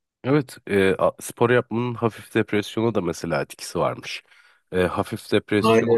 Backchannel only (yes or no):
yes